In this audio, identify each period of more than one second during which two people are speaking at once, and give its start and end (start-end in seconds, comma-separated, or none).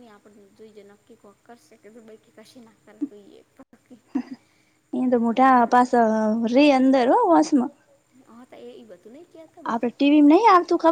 none